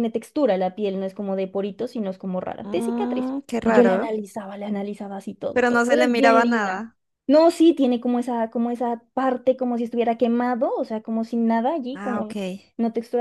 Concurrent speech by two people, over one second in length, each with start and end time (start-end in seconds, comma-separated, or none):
2.6-4.1, 5.5-6.8